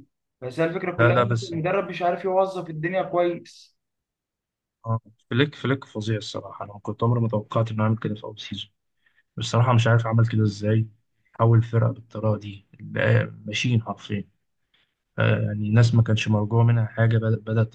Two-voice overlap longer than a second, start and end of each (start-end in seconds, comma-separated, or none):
none